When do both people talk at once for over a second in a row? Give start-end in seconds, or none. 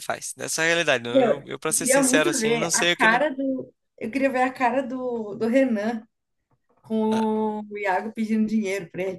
1.1-3.2